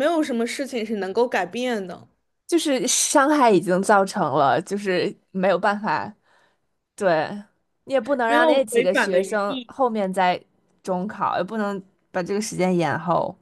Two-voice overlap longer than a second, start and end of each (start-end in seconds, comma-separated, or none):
8.2-9.7